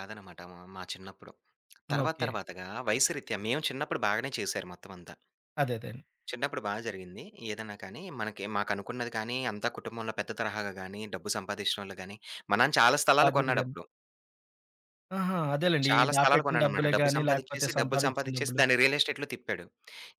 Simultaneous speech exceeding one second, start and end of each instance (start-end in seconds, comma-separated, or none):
15.9-18.6